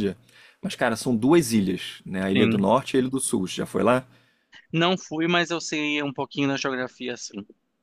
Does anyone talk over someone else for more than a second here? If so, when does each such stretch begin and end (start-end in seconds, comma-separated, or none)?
none